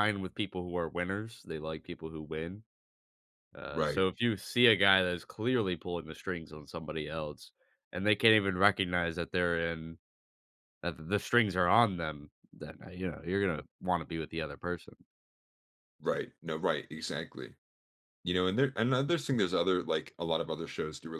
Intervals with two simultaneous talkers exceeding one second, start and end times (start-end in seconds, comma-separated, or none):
none